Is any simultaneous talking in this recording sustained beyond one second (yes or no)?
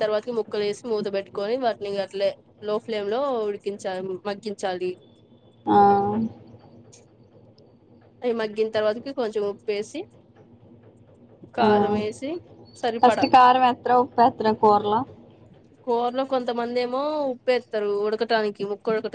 no